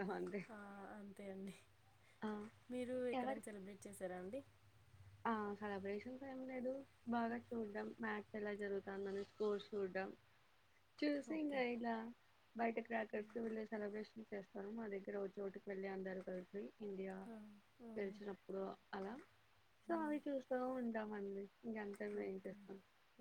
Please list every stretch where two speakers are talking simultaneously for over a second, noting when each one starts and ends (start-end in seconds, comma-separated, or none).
none